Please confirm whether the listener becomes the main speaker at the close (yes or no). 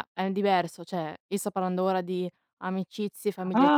yes